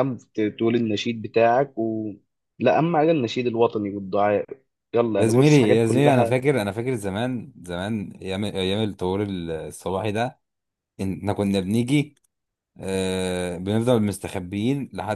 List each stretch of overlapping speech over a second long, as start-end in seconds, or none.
5.2-6.4